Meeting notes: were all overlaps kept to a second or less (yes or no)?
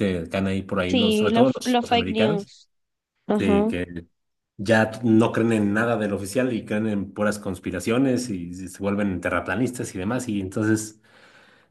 no